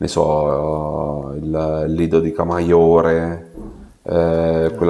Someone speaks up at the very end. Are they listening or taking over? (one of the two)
listening